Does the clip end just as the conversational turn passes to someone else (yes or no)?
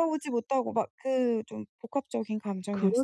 yes